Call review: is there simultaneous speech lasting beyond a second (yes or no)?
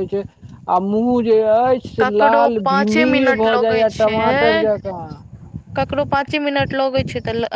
yes